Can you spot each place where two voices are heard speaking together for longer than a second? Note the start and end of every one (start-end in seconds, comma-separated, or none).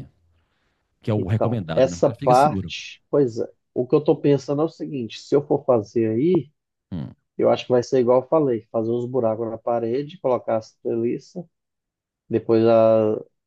1.1-2.7